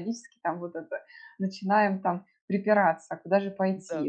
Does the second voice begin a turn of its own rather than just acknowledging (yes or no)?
no